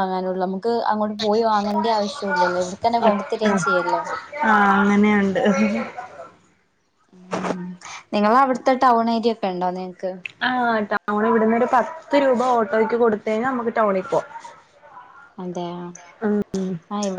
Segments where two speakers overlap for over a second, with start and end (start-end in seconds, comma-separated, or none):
none